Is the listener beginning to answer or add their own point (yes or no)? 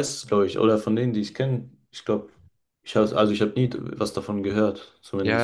yes